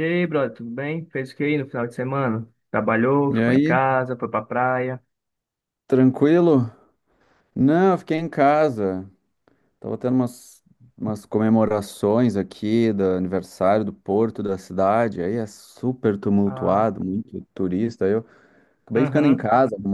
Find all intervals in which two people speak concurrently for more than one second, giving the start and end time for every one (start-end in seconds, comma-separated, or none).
none